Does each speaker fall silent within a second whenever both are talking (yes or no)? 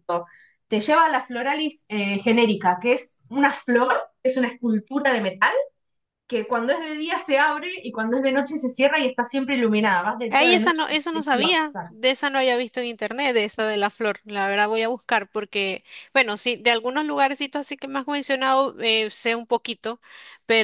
no